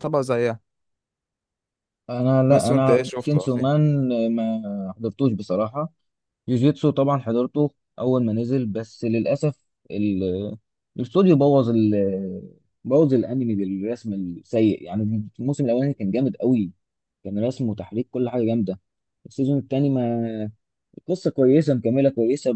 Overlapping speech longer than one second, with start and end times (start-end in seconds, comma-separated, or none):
2.5-3.7